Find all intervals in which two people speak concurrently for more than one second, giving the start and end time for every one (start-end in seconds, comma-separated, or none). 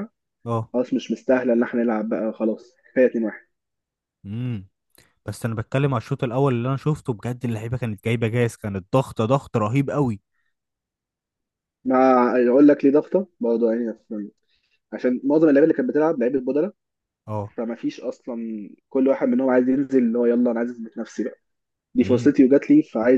none